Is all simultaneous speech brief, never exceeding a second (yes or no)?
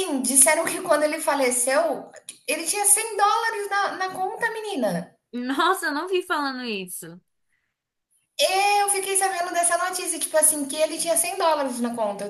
yes